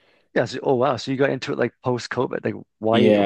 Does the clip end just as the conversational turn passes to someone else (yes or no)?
yes